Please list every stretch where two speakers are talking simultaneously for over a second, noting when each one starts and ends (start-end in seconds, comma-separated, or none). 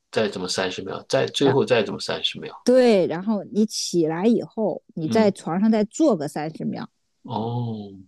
none